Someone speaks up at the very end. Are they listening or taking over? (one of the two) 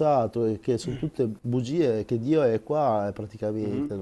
taking over